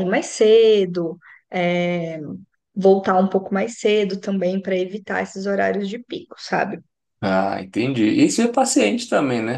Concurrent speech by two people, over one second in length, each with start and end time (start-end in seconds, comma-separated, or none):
none